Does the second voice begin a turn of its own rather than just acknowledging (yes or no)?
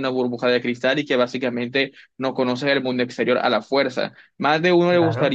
no